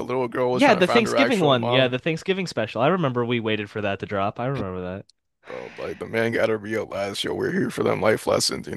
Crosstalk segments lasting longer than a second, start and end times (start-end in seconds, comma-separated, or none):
0.5-1.9